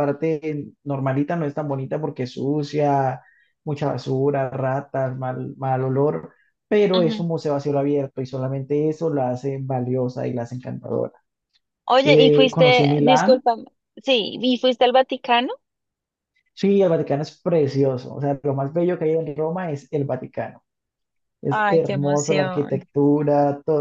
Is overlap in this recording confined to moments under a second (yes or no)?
no